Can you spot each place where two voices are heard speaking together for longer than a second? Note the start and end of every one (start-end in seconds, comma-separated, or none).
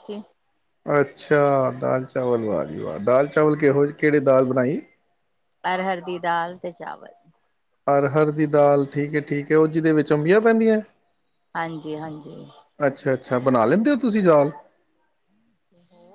none